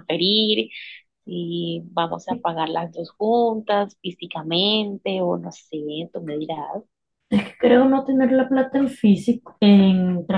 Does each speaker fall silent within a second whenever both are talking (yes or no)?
yes